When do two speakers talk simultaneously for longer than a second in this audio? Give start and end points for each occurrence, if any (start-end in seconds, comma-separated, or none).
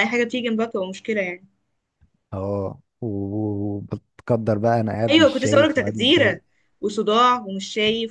5.1-6.4